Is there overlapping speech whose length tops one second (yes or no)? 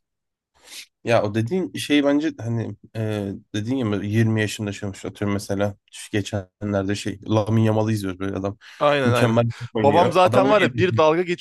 yes